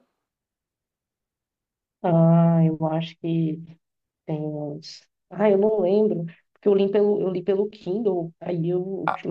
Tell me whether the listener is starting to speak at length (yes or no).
no